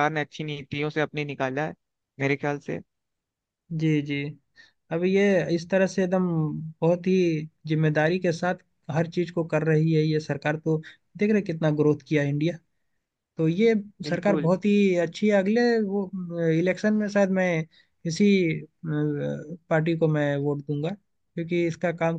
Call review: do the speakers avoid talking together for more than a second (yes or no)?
yes